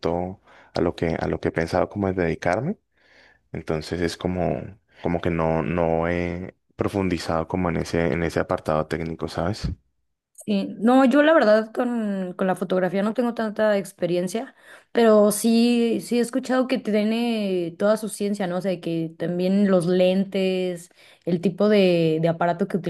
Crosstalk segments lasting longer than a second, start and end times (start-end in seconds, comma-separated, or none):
none